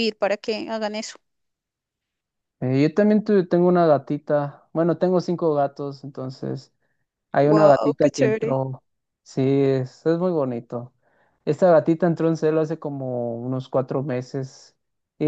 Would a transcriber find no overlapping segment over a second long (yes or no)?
no